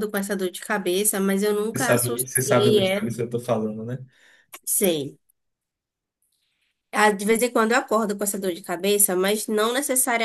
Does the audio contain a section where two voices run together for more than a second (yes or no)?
yes